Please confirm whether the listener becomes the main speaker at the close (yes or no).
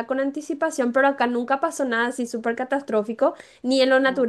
no